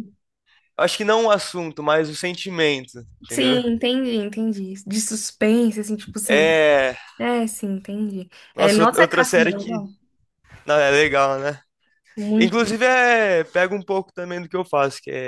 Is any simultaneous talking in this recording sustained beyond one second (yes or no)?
yes